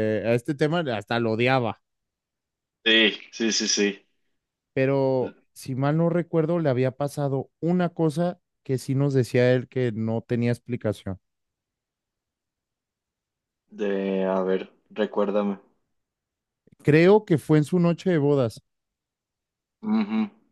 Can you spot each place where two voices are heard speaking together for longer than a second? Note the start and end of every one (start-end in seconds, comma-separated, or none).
none